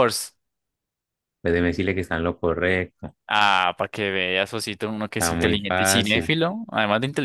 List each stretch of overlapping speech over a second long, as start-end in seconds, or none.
5.1-6.3